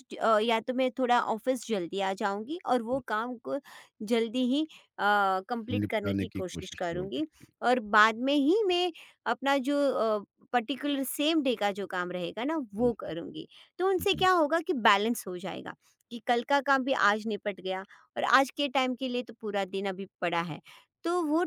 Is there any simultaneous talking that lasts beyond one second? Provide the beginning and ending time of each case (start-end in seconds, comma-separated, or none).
5.8-7.2